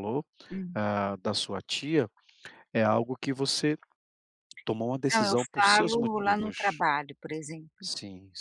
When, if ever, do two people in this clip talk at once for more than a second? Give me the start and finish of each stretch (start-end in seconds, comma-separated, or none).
5.1-6.8